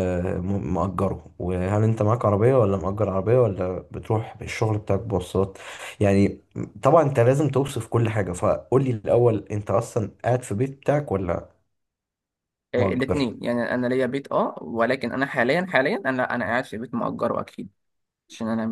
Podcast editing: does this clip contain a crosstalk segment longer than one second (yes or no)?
no